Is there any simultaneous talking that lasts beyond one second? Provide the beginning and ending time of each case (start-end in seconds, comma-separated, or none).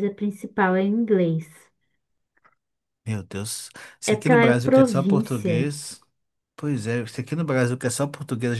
4.1-5.7